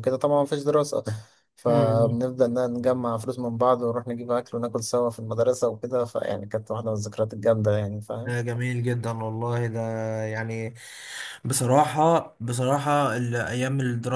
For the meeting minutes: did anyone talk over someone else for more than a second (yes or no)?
no